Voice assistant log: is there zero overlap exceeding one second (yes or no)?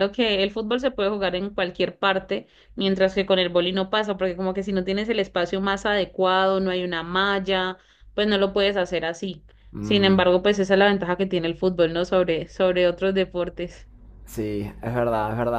yes